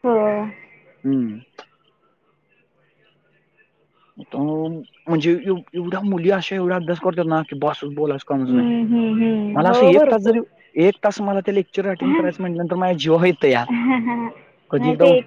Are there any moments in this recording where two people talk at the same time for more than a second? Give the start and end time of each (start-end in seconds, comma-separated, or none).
8.5-10.4